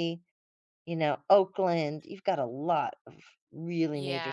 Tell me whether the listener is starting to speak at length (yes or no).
yes